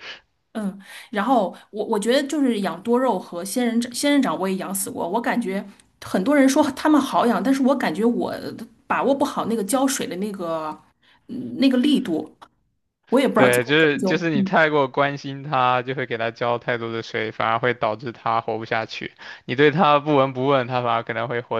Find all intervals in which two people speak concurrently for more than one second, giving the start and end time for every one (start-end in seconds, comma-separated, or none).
13.3-14.6